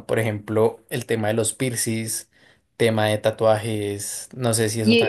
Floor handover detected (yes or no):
yes